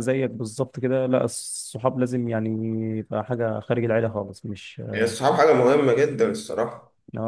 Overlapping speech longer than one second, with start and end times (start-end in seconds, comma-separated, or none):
none